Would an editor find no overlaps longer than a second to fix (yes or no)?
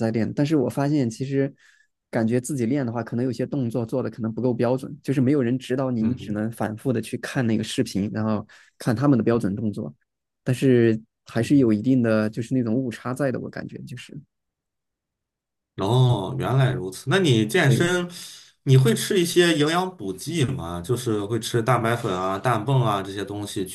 yes